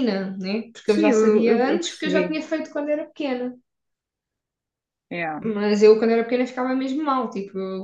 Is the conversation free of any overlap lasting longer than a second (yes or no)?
no